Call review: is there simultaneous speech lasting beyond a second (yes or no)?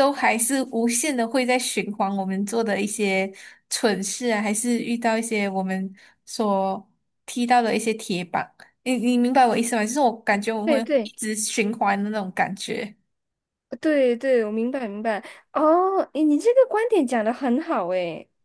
no